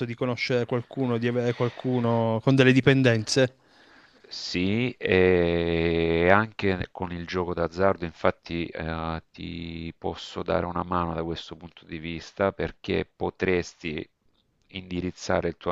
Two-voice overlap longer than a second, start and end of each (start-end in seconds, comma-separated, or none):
none